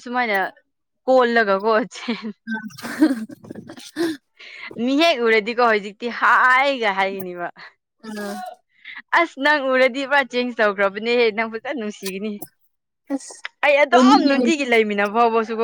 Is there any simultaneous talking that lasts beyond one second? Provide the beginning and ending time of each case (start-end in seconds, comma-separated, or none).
none